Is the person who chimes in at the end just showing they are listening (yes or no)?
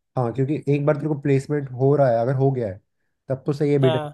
yes